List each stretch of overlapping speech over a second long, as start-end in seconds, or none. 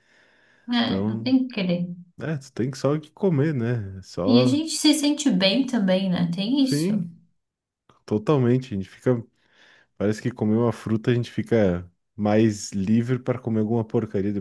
none